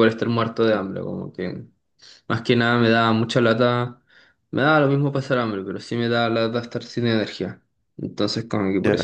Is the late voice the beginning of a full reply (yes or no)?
no